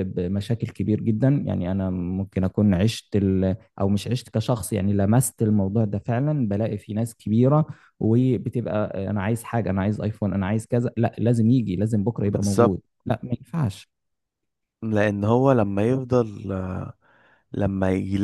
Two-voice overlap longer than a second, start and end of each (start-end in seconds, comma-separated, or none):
none